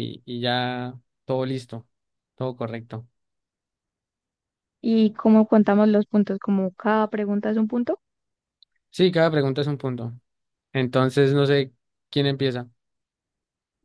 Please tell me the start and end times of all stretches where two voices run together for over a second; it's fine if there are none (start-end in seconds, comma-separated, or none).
none